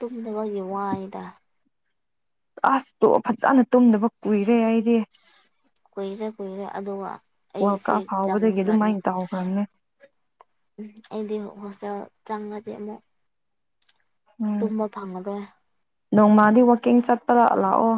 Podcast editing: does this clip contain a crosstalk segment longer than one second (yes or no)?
yes